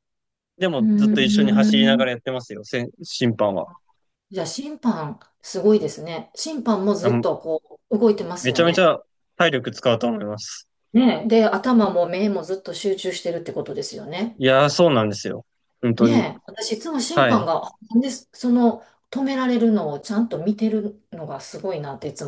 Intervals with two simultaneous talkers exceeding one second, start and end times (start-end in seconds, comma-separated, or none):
0.8-2.0